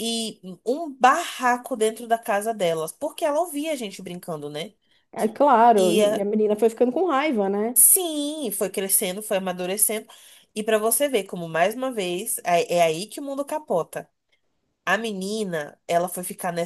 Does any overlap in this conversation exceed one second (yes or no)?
no